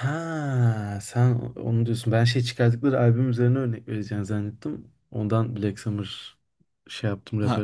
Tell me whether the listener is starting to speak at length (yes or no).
yes